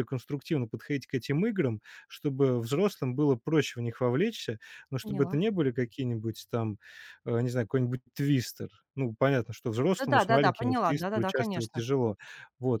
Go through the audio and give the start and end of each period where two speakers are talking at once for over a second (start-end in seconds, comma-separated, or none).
10.0-11.8